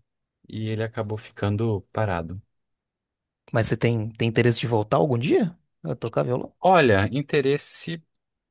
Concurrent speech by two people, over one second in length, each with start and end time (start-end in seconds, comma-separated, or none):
none